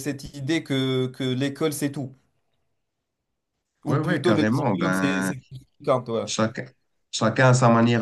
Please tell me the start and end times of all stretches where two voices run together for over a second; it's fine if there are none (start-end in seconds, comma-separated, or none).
3.9-5.3